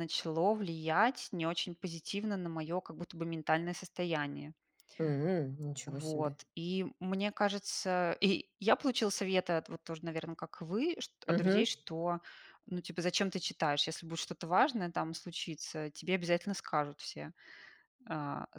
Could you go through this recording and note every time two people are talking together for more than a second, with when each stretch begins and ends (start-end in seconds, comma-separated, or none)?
none